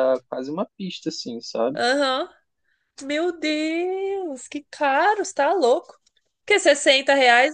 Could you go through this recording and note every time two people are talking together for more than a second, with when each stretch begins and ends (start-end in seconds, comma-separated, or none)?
none